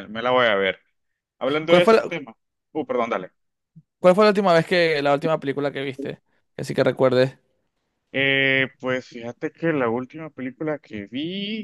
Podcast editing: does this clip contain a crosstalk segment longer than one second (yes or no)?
no